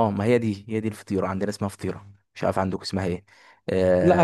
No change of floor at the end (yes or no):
no